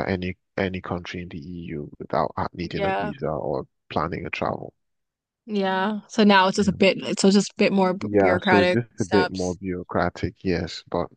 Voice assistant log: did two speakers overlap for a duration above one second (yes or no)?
yes